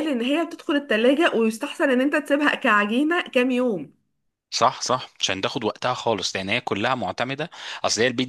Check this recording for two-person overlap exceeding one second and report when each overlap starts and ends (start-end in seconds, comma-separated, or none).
none